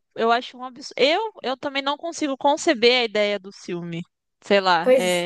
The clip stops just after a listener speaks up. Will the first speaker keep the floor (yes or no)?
no